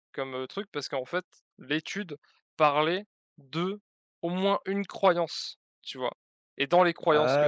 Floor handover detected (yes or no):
no